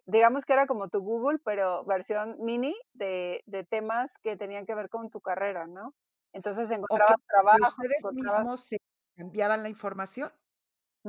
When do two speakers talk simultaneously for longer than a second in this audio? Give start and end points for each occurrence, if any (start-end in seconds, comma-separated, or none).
6.9-8.6